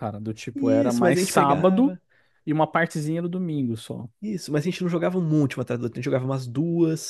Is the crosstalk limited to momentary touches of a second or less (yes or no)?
no